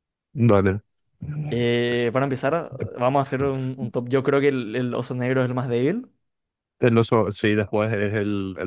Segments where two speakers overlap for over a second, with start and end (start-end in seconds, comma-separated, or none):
none